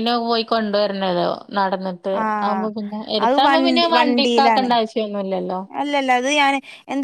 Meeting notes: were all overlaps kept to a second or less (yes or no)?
no